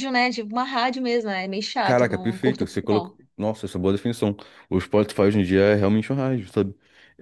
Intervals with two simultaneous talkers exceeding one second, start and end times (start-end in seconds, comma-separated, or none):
1.8-3.1